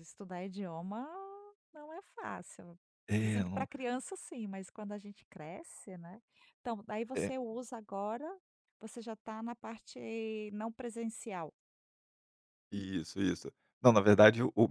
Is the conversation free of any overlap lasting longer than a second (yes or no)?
yes